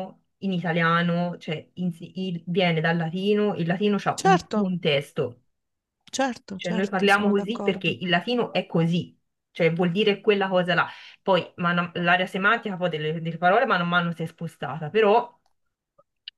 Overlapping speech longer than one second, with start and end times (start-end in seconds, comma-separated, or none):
6.5-8.0